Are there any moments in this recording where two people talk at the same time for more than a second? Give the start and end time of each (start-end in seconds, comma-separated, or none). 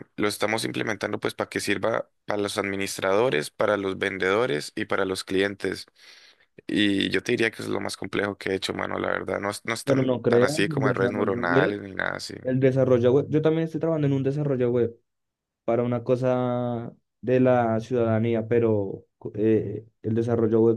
9.8-11.8